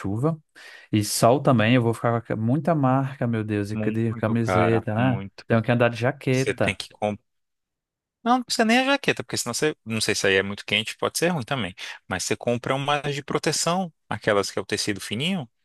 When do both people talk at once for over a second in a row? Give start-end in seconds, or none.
3.7-5.5